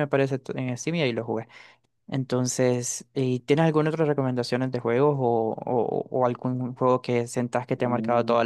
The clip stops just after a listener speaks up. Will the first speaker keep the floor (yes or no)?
no